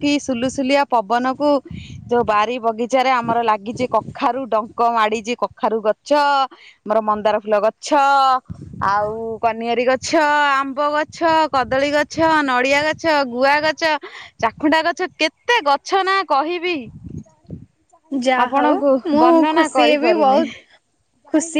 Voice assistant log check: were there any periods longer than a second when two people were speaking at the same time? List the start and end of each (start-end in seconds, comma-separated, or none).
18.5-20.4